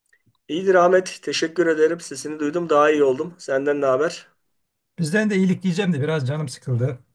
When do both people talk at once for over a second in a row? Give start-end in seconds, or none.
none